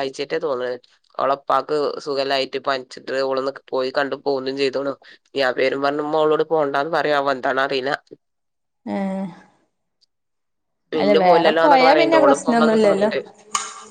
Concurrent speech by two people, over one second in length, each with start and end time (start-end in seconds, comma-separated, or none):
11.0-13.1